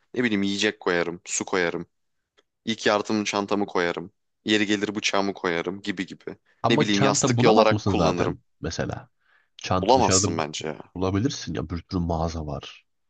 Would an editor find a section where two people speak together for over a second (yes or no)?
yes